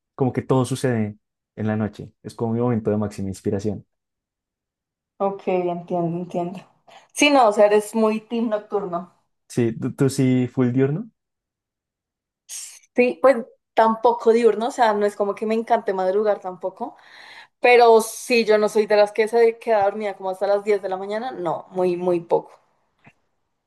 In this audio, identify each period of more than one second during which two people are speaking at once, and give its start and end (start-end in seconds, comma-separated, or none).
none